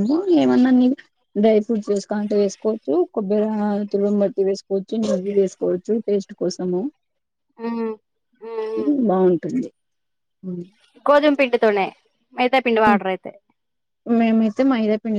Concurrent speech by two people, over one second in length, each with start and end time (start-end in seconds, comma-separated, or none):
none